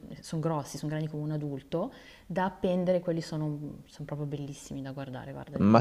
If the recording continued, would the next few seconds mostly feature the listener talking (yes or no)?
yes